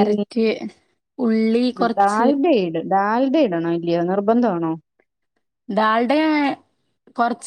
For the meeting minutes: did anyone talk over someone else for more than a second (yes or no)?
no